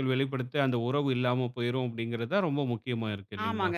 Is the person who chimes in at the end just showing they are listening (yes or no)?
no